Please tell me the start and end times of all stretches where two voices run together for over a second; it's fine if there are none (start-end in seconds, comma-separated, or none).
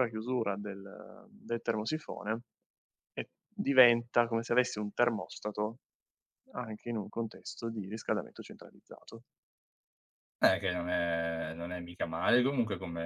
none